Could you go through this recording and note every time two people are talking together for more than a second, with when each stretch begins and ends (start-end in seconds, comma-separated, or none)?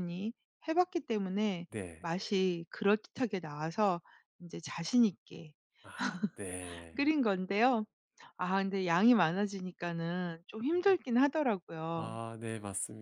none